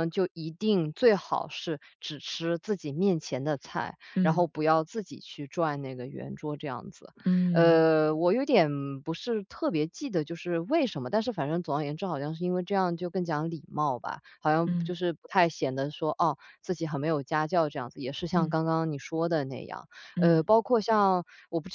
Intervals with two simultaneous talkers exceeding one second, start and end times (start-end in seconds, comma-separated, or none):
none